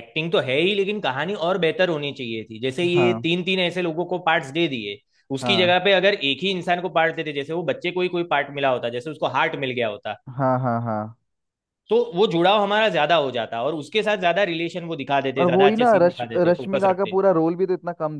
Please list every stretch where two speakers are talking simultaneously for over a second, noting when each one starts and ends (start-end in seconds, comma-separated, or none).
15.4-17.1